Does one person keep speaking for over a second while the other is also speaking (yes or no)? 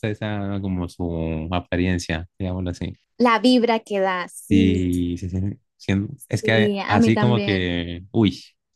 yes